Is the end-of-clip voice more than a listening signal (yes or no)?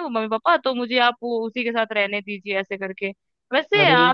no